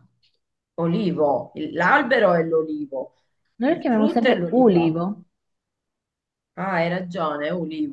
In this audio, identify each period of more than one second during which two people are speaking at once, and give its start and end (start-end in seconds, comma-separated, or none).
3.6-5.0